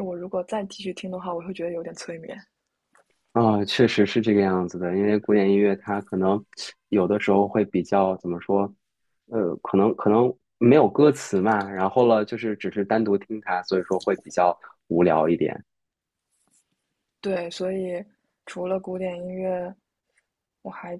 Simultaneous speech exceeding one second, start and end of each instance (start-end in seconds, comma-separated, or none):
none